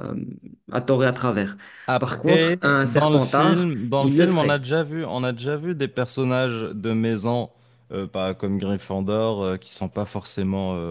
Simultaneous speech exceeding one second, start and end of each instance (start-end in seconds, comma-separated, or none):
2.0-4.6